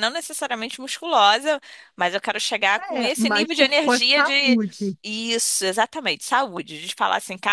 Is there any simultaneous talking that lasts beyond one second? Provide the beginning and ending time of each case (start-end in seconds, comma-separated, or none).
3.0-4.6